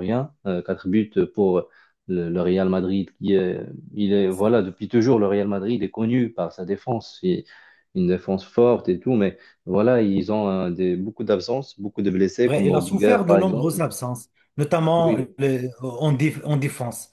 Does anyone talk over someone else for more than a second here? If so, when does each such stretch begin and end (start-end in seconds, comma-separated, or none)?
12.4-13.8